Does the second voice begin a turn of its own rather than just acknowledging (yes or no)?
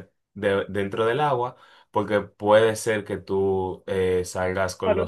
yes